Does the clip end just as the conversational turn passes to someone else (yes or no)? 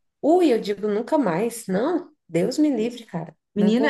yes